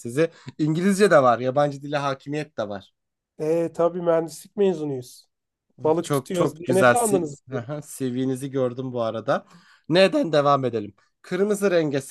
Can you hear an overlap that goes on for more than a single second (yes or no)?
yes